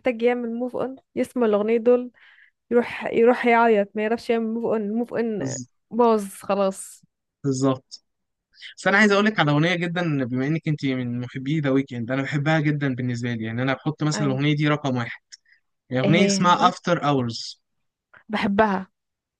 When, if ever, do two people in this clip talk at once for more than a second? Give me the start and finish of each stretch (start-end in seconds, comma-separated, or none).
none